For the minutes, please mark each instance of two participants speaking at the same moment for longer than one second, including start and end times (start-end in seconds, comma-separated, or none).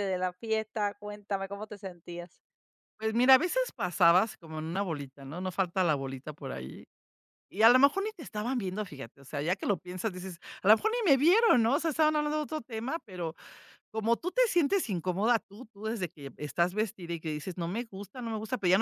none